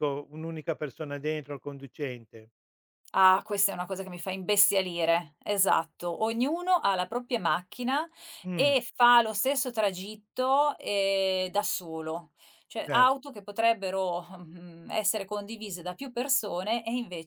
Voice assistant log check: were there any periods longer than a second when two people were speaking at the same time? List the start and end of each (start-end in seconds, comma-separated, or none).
none